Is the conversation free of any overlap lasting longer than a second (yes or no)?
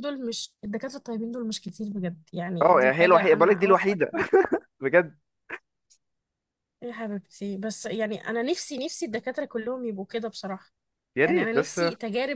no